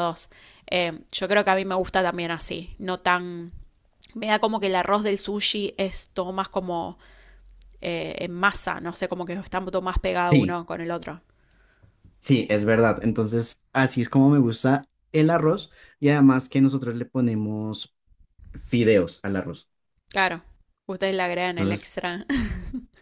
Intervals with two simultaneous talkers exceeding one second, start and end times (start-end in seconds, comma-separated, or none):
none